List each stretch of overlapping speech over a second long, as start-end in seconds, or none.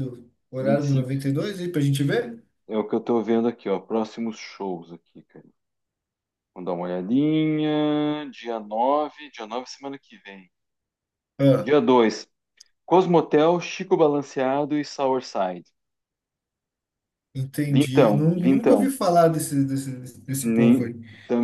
17.7-18.9